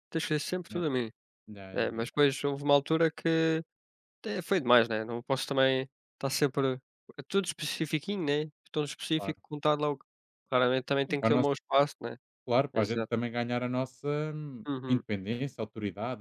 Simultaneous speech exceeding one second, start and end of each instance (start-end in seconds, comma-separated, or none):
none